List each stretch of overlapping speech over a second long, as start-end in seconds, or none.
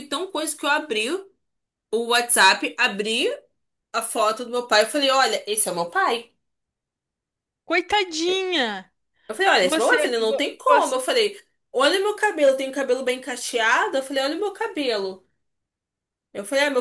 9.6-10.9